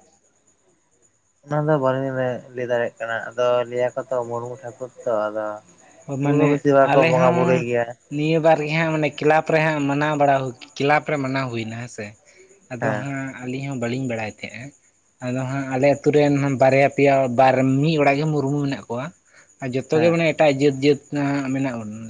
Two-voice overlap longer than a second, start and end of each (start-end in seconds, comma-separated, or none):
6.2-7.6